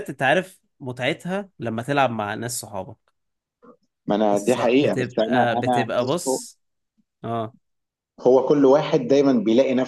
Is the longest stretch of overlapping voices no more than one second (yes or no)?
no